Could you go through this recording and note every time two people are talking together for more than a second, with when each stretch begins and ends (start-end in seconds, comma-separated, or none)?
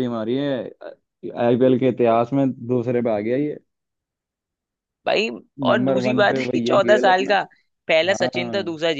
5.7-7.3